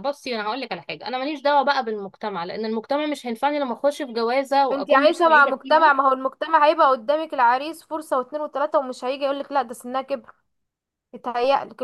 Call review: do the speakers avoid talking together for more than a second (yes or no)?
no